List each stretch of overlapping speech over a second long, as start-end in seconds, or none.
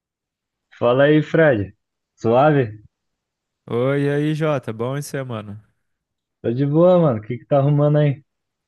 none